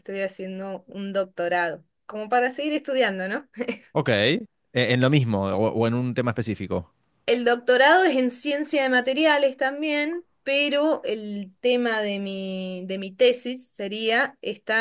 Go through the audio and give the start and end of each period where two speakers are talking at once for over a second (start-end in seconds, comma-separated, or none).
none